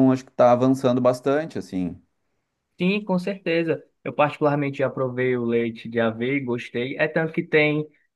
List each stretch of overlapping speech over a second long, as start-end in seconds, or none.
none